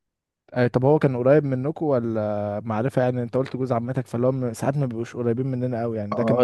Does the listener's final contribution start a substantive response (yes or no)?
yes